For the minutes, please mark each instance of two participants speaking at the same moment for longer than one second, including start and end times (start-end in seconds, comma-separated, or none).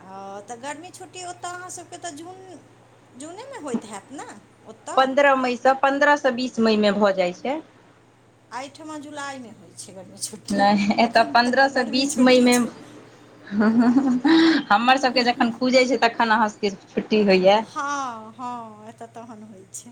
none